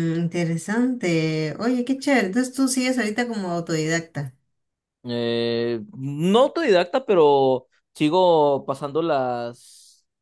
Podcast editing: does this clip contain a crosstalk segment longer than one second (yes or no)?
no